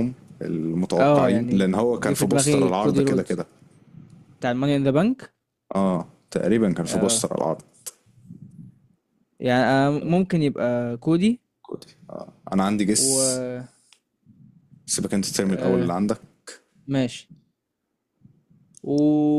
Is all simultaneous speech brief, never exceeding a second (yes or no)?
no